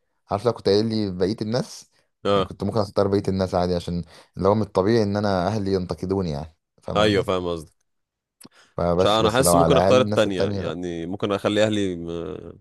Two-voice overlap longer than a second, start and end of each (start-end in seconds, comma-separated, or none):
9.0-10.7